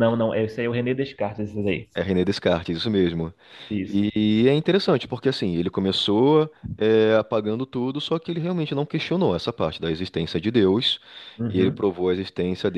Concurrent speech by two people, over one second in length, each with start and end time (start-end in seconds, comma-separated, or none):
none